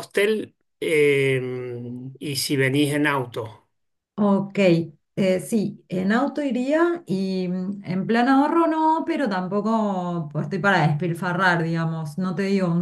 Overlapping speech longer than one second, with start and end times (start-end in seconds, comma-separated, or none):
none